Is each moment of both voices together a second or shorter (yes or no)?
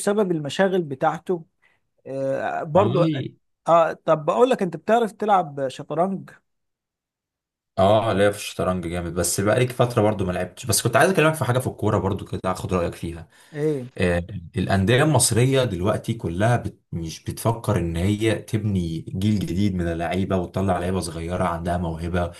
yes